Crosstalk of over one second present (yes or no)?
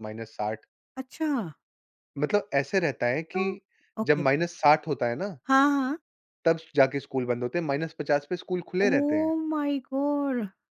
no